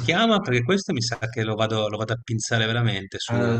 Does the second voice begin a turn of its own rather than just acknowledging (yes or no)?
yes